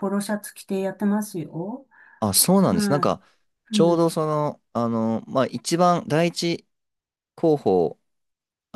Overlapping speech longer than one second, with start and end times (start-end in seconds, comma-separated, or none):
none